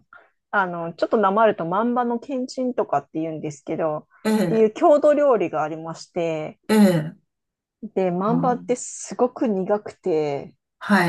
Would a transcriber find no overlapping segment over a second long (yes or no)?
yes